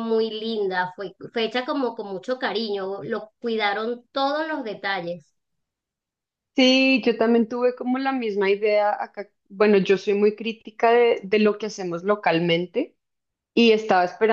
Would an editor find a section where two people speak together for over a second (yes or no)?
no